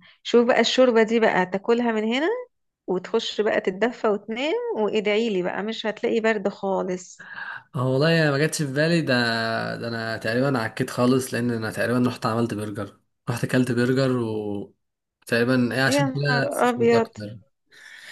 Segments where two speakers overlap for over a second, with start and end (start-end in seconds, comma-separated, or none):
15.9-17.1